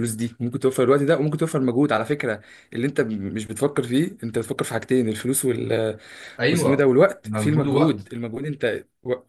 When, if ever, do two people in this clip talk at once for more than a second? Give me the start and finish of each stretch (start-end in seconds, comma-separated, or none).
6.5-8.1